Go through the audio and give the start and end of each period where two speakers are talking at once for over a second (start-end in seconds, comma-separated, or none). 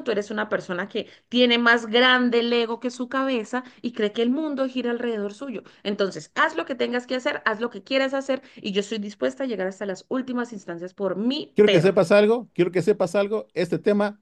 none